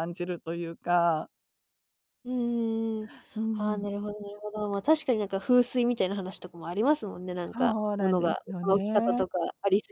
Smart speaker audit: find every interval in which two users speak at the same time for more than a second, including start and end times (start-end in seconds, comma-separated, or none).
7.5-9.3